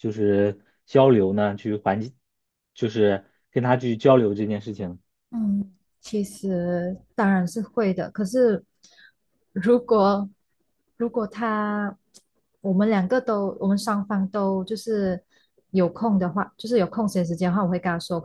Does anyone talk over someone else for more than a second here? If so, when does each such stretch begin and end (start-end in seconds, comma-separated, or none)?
none